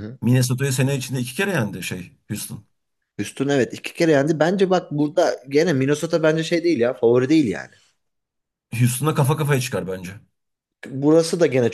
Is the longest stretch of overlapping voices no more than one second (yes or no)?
yes